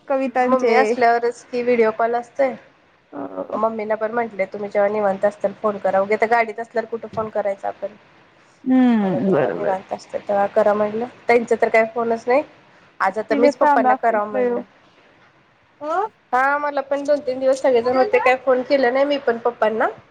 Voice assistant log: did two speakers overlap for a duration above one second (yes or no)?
yes